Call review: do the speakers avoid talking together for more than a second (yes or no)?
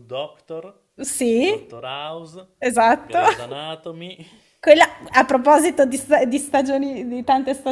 yes